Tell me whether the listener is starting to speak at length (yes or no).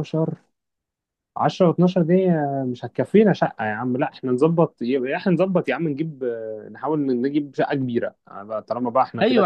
yes